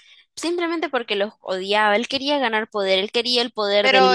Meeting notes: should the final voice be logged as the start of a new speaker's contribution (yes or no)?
yes